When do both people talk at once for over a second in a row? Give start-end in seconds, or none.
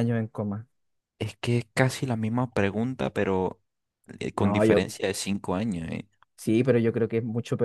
none